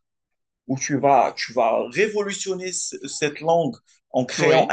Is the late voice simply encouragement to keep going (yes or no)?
yes